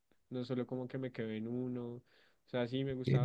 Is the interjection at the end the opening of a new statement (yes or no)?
no